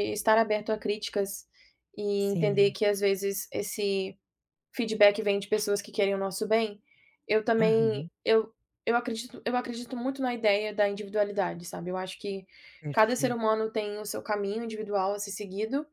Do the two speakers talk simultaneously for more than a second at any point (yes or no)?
no